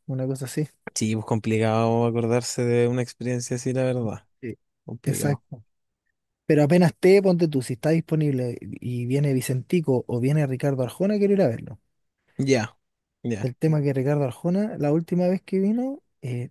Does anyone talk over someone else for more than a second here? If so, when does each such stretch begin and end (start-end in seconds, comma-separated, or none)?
none